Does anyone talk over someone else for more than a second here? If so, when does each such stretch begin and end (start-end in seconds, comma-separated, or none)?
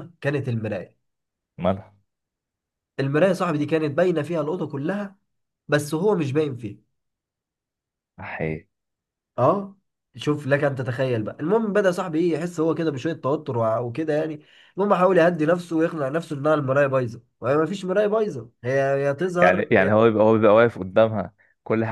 none